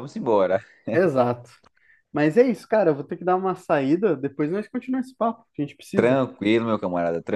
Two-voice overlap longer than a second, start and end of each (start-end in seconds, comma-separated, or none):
none